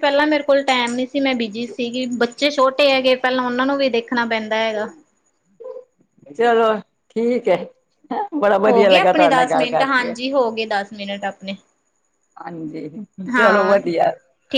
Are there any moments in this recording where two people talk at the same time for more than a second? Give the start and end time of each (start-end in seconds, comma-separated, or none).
8.7-10.1